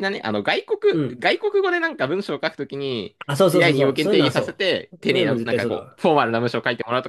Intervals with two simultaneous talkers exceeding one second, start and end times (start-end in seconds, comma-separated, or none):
3.3-6.0